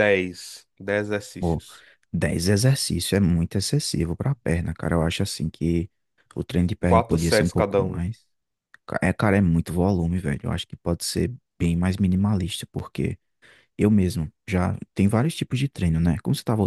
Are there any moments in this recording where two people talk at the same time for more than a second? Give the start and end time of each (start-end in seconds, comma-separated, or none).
6.8-8.0